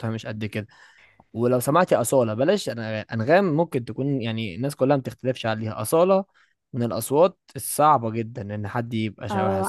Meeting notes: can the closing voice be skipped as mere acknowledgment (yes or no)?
no